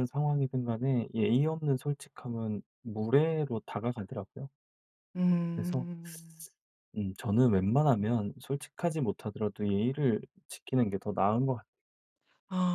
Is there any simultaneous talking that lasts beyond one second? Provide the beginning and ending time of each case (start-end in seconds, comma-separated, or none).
none